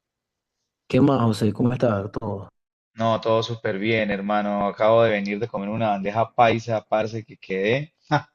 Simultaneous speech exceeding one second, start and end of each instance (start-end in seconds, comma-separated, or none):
none